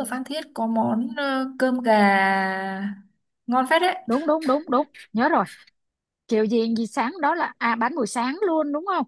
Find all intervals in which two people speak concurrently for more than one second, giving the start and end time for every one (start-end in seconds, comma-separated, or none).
none